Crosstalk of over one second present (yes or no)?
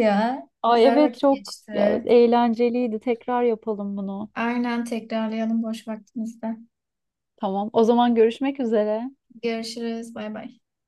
yes